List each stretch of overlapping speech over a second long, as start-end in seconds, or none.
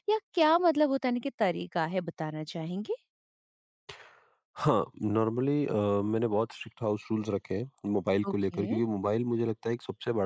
none